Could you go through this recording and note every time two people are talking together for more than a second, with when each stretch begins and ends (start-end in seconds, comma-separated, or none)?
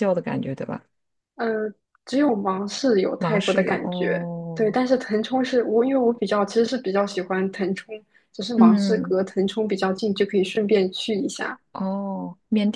3.2-4.8